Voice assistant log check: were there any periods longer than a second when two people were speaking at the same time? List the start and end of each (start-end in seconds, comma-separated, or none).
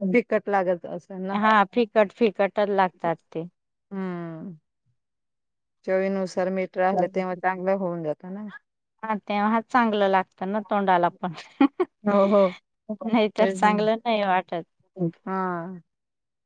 none